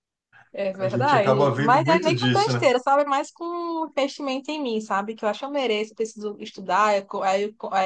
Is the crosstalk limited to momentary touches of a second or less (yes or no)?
no